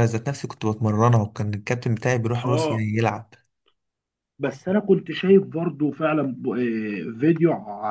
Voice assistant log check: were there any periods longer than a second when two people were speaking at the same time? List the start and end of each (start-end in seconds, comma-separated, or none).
none